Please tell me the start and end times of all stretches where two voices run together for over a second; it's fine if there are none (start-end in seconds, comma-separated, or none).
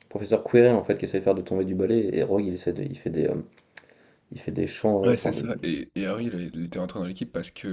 none